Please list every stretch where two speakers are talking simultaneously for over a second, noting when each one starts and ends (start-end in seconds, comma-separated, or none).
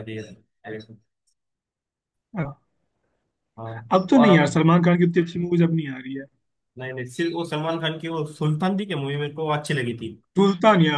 none